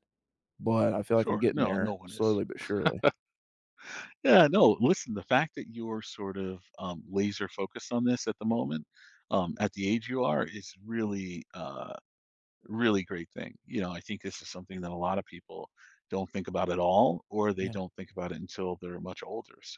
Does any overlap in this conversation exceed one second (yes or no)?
yes